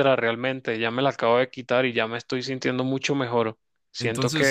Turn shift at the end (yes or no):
yes